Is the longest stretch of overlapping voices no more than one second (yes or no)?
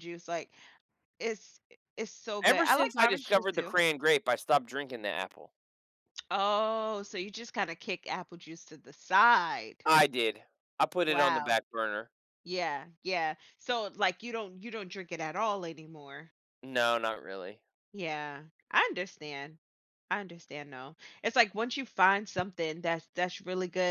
no